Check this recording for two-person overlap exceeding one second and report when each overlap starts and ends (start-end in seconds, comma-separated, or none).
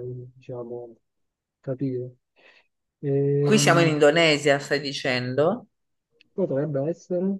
none